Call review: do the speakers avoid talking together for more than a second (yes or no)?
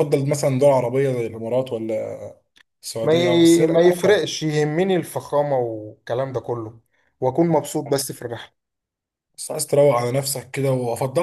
no